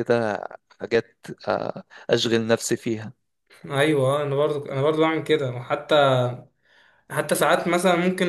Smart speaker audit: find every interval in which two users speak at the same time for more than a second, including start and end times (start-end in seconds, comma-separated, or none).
none